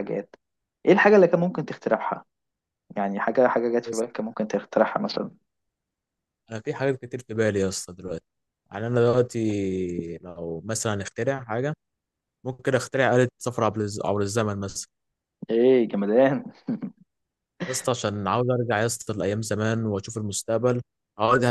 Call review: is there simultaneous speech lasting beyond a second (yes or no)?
no